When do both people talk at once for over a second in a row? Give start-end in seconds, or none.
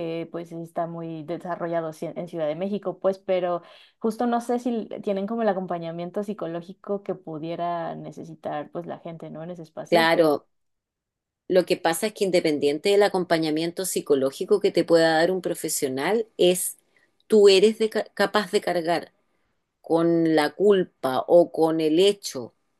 none